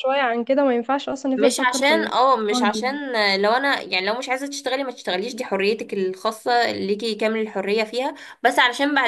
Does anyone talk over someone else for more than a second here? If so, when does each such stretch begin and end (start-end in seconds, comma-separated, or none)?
1.4-2.9